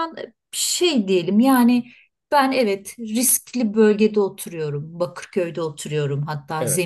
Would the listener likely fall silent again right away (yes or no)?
yes